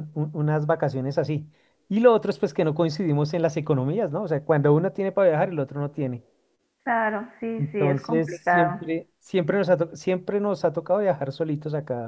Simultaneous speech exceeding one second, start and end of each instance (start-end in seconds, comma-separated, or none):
7.6-8.8